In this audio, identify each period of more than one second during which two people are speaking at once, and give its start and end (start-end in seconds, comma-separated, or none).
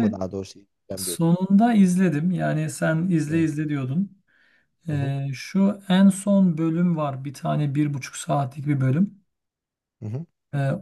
none